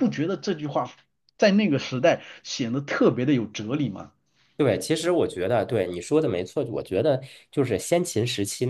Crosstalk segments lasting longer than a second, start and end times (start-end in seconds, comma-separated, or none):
none